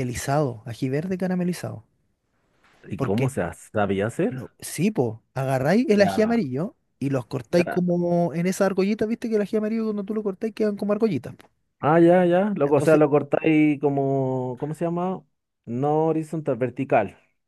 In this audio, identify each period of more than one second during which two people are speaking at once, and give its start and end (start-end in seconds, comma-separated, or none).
none